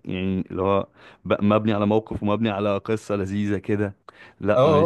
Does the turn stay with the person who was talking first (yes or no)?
no